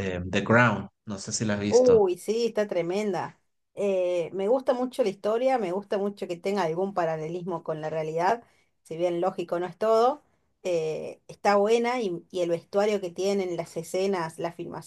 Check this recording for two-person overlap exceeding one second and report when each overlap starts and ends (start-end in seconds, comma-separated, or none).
none